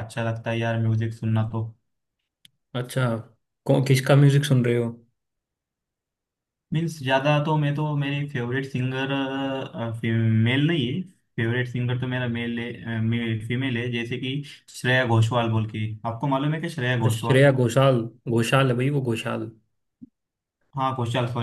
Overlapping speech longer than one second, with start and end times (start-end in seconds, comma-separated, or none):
none